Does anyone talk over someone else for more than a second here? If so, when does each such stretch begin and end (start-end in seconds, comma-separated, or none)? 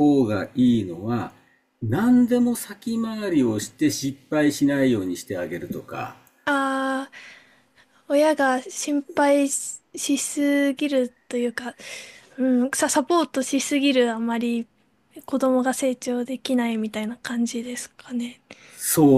none